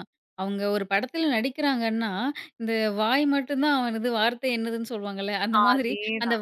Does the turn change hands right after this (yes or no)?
no